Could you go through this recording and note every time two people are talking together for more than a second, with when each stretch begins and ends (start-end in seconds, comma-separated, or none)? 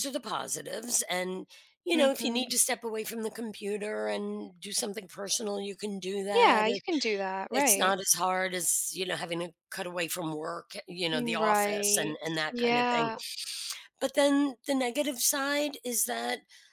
11.1-13.1